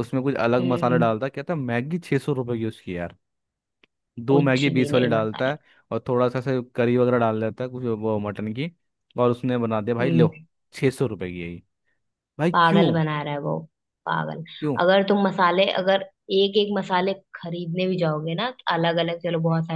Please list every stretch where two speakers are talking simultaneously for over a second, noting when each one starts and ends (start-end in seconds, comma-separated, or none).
4.3-5.5